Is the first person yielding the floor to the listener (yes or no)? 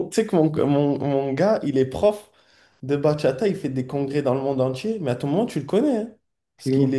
no